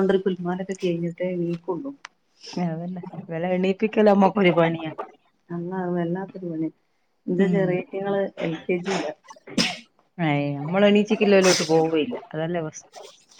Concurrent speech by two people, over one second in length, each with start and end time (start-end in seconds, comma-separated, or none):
none